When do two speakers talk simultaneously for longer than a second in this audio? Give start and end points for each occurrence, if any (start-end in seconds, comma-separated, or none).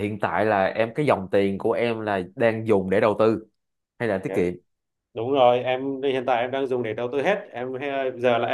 none